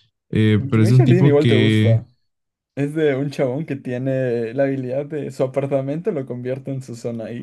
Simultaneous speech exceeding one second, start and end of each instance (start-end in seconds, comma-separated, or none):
0.6-2.0